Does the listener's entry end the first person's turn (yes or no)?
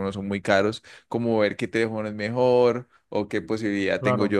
no